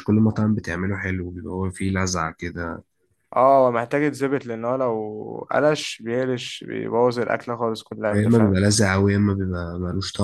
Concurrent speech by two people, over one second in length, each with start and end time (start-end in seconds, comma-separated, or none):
none